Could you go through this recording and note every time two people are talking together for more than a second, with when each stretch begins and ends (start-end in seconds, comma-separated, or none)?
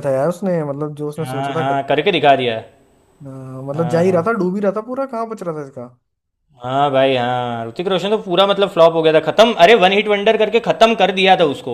none